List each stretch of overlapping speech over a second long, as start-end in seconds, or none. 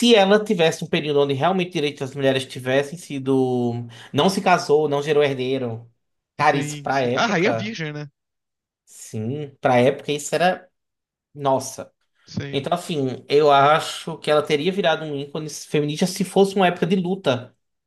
6.4-7.7